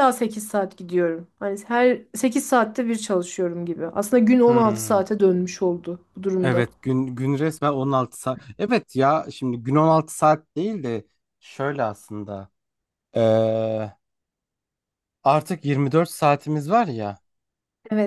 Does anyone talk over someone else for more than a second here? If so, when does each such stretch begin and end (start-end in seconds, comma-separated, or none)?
none